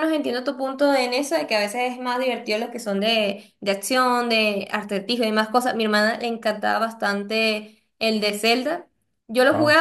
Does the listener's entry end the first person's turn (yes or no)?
no